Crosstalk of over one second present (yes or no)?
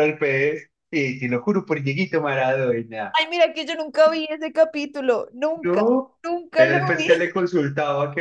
no